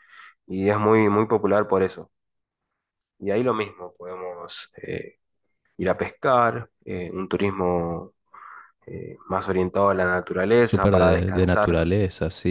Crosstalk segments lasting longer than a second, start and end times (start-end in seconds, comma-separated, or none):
10.6-11.8